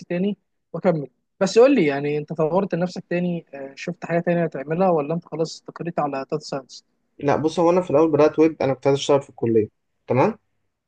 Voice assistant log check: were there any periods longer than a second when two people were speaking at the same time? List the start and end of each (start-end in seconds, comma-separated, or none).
none